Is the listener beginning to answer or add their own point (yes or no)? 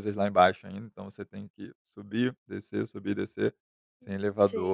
no